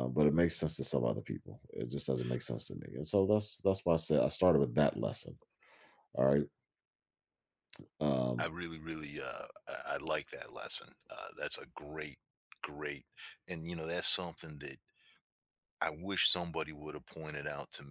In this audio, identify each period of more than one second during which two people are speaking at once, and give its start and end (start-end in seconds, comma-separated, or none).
none